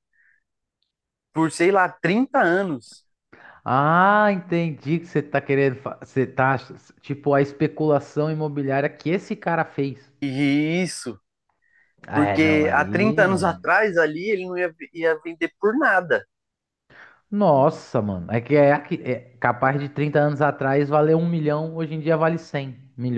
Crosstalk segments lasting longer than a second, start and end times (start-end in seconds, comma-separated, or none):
12.1-13.7